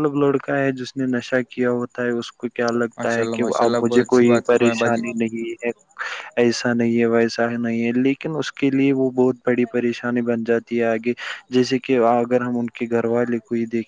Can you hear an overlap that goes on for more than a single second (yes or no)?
yes